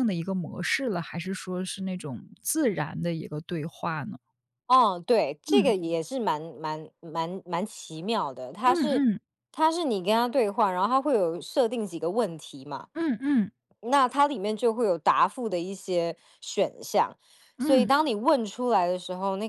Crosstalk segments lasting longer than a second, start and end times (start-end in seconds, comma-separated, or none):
none